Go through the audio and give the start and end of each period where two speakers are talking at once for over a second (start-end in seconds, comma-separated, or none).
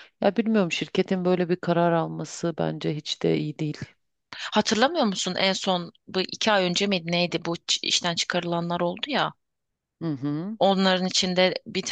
none